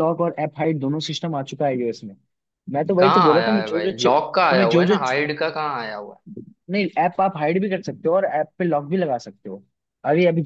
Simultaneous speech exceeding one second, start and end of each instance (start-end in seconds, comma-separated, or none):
3.0-5.0